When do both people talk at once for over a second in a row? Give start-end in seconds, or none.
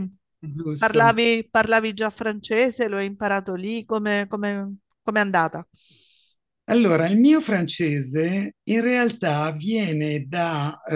none